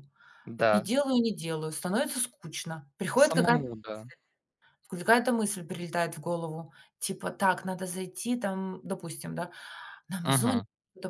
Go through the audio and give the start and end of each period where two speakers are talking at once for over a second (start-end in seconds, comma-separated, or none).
none